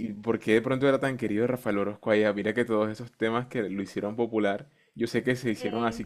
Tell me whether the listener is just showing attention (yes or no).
yes